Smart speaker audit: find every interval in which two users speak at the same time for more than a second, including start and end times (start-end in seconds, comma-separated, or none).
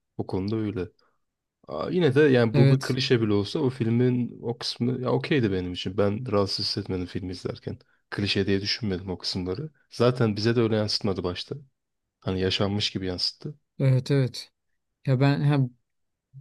none